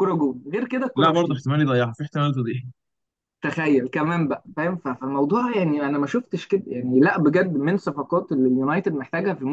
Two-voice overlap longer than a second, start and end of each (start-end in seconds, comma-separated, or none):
none